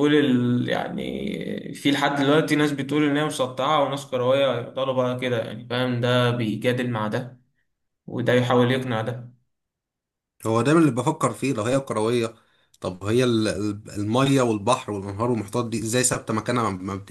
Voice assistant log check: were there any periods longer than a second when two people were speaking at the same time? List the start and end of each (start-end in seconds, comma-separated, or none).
none